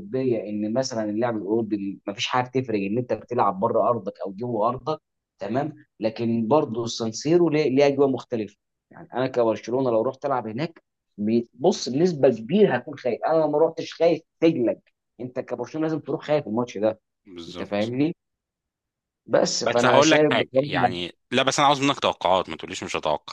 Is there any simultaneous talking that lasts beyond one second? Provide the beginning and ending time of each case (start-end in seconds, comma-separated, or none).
19.6-20.9